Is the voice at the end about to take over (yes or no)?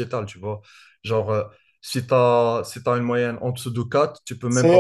yes